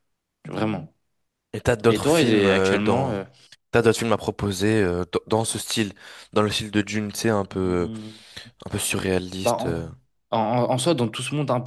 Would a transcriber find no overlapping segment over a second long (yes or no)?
no